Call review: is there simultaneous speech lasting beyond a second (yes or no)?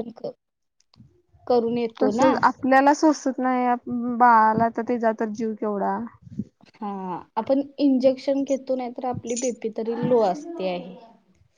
no